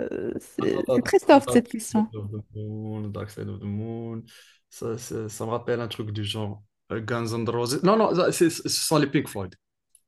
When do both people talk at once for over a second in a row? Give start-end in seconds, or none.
0.6-2.1